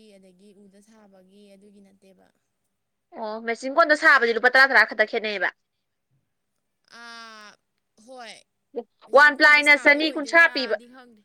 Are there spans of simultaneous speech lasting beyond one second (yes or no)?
yes